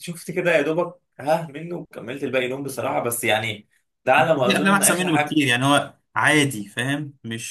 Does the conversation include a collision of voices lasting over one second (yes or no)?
yes